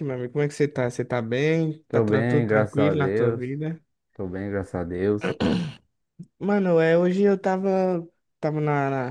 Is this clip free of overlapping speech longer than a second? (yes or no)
no